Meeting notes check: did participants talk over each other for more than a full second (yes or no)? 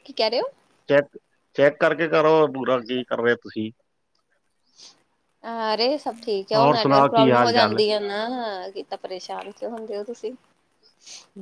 yes